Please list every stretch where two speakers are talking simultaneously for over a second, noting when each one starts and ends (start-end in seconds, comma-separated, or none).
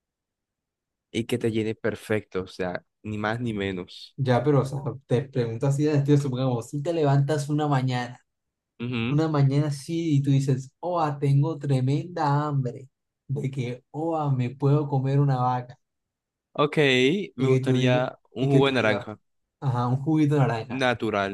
17.4-19.1